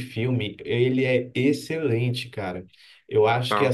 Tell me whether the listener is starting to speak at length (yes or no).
no